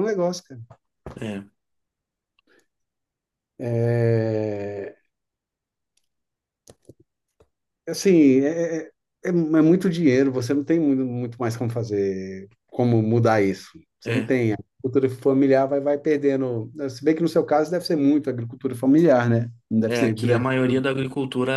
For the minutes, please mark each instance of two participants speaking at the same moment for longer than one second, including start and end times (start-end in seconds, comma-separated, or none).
none